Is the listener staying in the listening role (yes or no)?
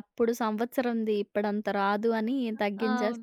no